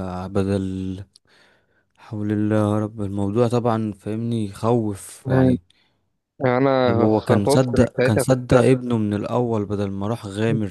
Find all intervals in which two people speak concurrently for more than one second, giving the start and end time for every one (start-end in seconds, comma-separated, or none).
6.8-8.6